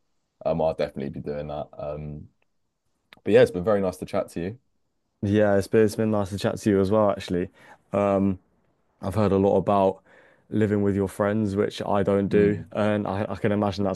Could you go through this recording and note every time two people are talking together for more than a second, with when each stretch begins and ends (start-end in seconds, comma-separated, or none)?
none